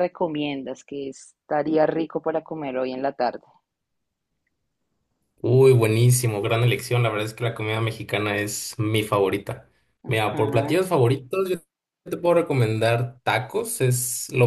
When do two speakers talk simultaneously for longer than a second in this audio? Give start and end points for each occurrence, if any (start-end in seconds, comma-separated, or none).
none